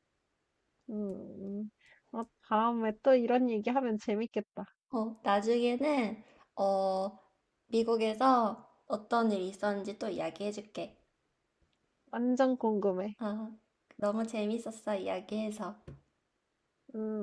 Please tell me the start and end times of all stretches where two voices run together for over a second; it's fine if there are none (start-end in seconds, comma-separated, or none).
none